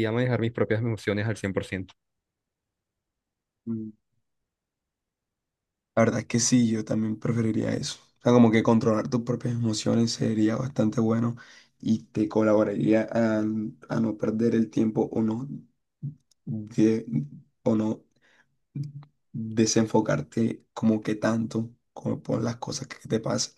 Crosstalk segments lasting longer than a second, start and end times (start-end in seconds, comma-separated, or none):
none